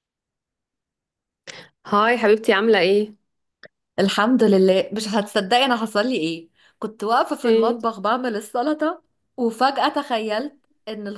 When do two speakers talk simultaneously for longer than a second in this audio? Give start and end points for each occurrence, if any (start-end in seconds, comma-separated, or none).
none